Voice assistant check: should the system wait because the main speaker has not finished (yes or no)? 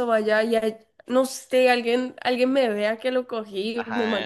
no